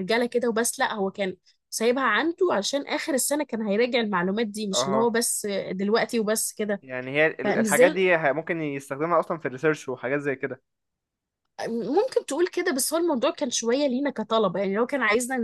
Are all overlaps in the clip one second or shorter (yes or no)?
yes